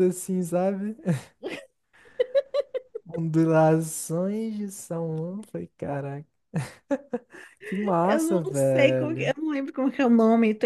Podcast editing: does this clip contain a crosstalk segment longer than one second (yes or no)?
yes